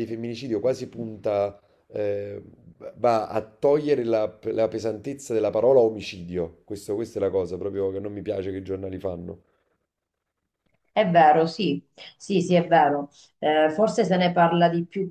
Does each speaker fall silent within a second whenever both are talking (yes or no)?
yes